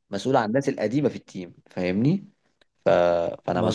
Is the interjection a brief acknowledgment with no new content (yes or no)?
yes